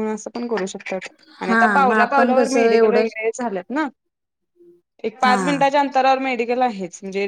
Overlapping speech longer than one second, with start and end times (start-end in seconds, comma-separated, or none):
1.5-3.1